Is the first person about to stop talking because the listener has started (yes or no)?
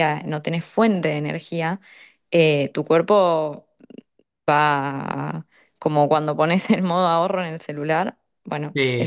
yes